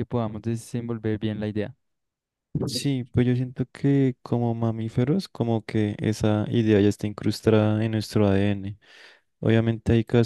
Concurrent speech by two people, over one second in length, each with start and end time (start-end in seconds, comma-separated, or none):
none